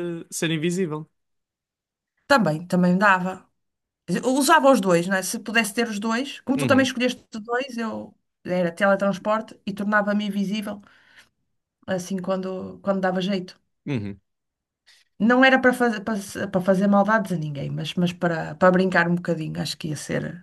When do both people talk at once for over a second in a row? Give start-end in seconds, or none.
none